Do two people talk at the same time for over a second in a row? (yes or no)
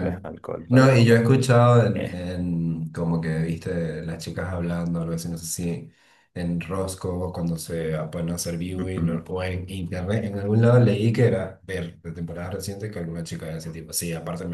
no